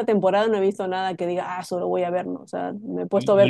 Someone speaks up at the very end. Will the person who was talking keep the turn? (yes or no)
no